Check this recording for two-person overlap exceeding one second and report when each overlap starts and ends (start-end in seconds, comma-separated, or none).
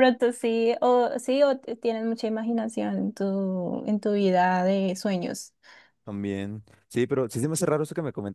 none